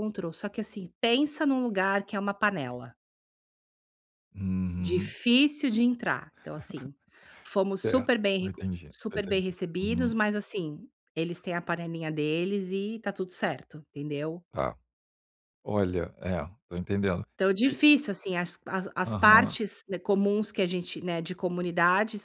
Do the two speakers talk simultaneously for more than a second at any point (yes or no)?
yes